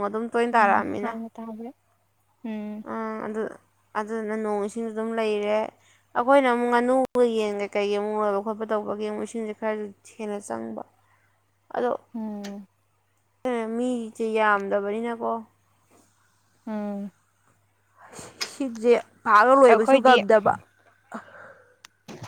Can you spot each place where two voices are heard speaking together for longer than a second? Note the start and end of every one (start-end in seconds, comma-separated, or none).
none